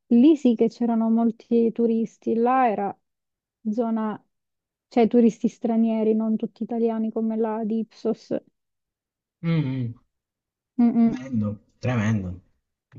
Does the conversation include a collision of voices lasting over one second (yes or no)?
no